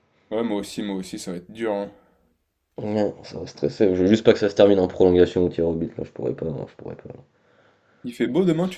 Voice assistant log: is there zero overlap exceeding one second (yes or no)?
yes